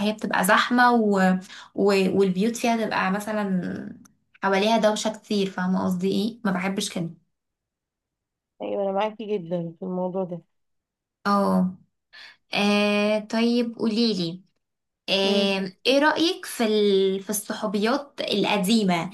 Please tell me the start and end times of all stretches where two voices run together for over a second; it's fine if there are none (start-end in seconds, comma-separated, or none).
none